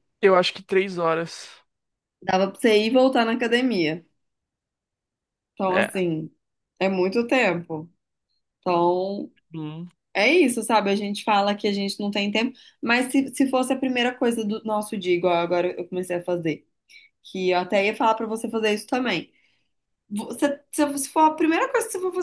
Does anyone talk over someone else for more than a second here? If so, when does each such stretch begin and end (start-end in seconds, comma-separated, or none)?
none